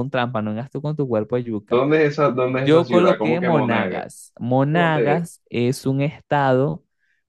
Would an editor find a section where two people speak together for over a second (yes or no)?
yes